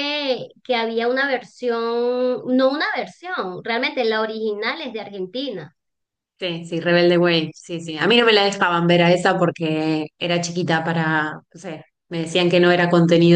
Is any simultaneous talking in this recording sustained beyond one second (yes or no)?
no